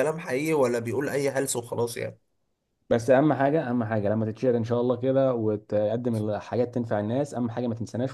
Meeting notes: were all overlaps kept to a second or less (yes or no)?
yes